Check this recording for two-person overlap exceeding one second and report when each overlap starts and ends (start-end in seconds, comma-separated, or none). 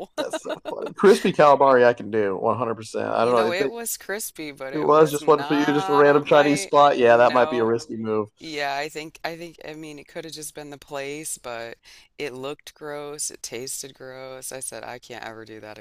4.7-7.7